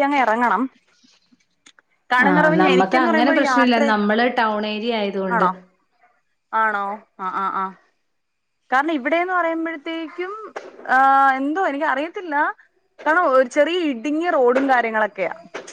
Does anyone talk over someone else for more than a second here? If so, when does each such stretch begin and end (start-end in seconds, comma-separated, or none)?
2.3-3.9